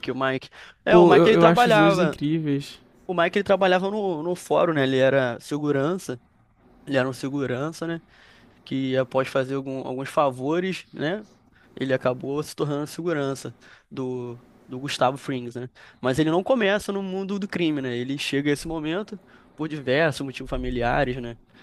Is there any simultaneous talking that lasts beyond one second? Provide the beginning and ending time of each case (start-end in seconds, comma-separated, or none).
0.9-2.2